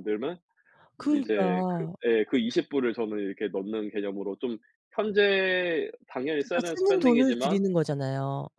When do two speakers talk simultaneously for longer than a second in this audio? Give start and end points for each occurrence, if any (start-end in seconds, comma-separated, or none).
6.4-7.6